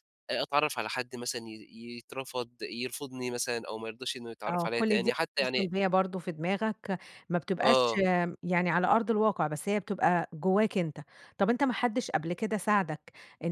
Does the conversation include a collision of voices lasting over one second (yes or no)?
yes